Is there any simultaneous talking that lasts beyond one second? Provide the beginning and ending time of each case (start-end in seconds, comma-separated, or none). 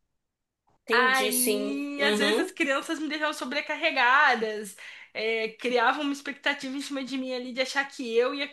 0.9-2.5